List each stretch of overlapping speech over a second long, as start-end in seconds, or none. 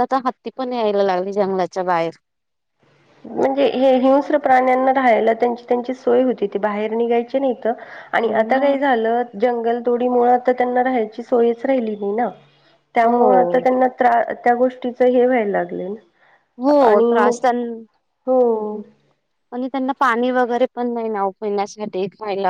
none